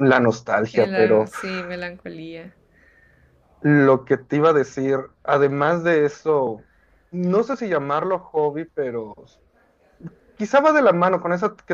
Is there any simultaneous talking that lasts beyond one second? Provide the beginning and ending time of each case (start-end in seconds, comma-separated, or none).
none